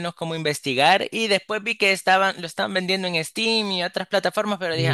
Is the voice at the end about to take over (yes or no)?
yes